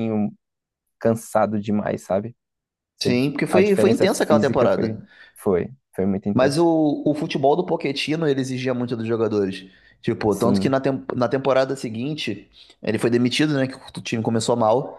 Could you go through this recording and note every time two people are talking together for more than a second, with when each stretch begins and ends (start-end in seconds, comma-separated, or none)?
3.0-5.0